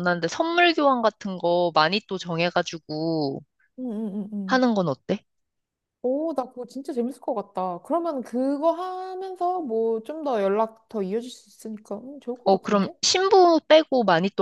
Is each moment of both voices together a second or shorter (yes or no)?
yes